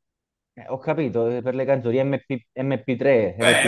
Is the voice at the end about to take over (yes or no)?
yes